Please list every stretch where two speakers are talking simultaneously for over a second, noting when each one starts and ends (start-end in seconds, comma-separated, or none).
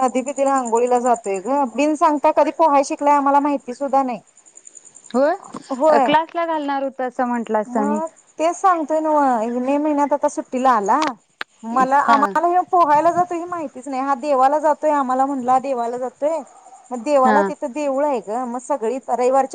none